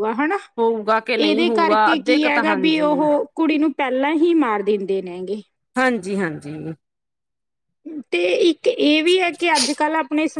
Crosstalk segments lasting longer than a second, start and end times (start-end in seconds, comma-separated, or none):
1.1-3.0